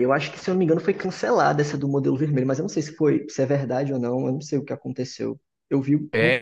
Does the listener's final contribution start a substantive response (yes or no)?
no